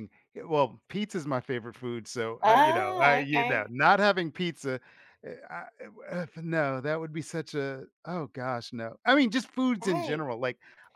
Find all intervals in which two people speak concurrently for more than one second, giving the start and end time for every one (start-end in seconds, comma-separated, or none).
2.4-3.7